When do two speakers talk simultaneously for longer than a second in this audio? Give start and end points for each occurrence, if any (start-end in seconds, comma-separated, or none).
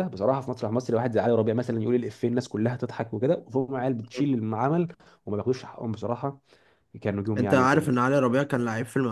none